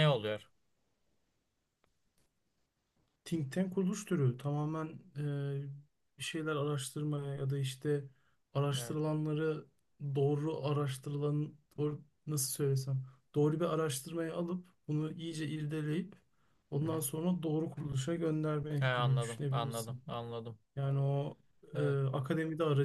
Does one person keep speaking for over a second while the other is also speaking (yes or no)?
yes